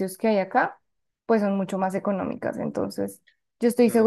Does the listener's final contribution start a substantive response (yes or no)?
no